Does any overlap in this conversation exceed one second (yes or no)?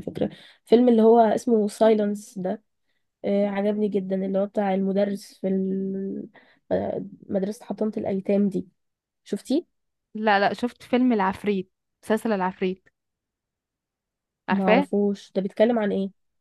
no